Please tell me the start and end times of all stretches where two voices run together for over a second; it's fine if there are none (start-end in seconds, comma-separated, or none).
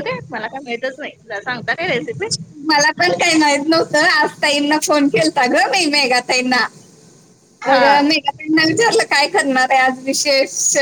none